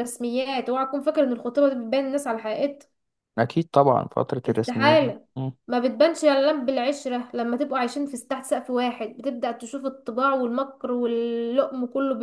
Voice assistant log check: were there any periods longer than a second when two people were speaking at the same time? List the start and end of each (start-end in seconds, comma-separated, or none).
none